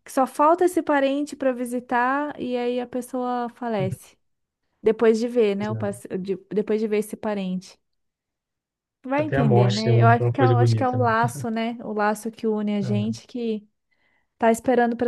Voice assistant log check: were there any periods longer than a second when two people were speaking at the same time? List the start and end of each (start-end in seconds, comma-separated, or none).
9.1-11.1